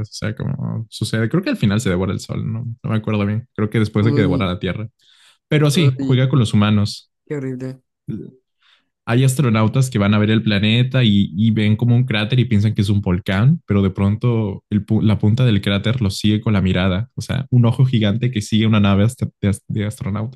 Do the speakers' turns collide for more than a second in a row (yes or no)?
no